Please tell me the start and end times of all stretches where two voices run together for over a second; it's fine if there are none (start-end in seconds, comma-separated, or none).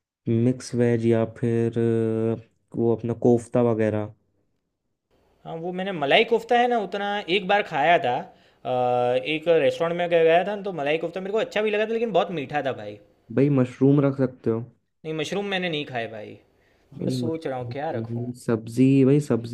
17.0-18.3